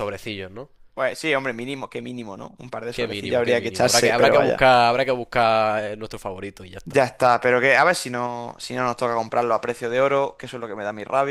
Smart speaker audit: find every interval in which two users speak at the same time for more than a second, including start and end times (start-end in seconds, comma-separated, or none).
2.9-4.7